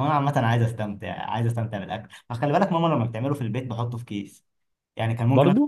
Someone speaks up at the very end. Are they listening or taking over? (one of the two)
listening